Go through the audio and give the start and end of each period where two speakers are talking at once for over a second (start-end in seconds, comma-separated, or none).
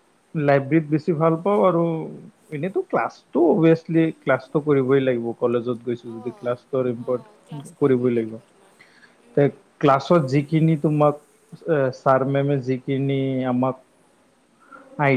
none